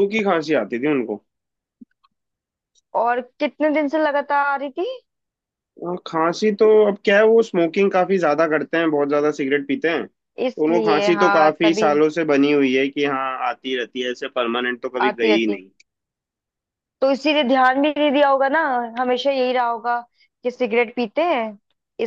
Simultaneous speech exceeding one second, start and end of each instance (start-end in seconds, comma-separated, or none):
10.5-11.9